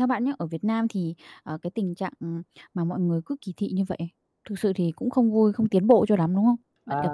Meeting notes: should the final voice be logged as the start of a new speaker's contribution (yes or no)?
yes